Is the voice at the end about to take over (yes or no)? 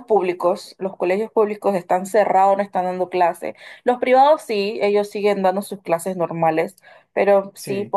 no